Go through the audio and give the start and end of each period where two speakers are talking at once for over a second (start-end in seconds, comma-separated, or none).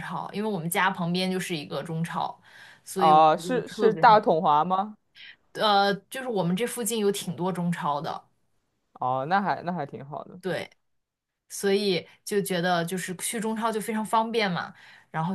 3.0-4.2